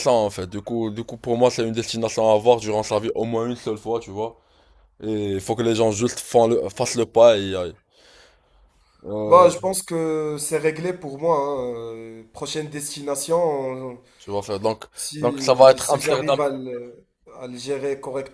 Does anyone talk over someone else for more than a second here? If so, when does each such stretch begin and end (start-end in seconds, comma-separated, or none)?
15.2-16.4